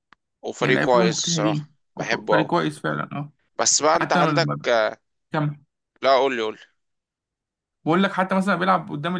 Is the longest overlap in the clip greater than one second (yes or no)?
yes